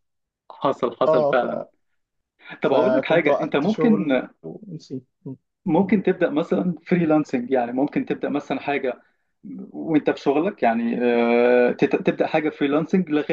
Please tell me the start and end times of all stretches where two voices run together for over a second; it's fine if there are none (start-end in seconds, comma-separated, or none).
2.6-4.2